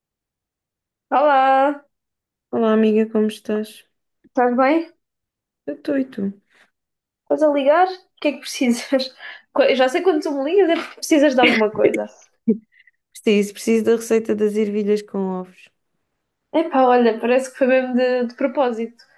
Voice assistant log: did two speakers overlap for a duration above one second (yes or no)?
no